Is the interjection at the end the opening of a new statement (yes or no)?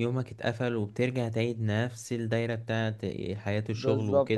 yes